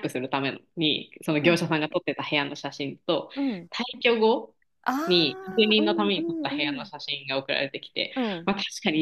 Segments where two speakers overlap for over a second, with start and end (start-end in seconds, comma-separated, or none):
5.1-6.9